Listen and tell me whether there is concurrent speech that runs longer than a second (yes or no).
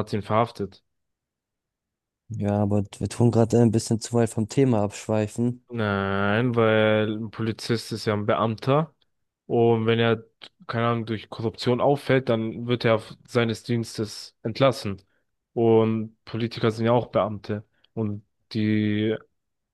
no